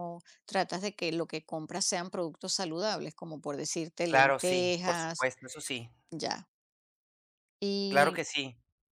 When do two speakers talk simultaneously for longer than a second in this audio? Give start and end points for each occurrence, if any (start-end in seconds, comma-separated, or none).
4.1-5.3